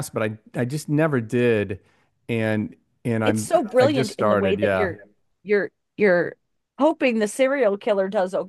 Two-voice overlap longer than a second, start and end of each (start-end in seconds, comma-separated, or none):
3.2-5.0